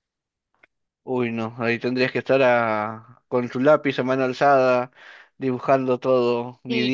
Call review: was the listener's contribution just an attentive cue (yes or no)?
no